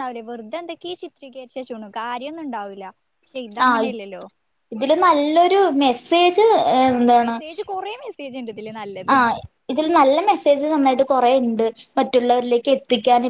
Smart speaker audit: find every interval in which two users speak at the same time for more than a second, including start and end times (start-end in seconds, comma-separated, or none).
none